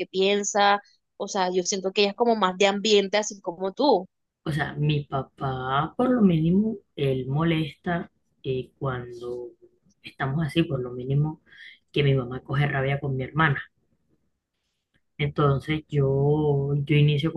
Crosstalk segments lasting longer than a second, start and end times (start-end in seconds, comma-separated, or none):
none